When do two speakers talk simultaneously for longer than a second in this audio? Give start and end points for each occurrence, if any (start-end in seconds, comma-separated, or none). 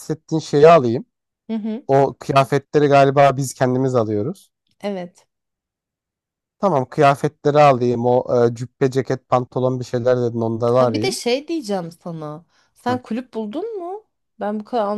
none